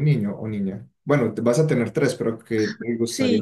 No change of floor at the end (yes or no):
no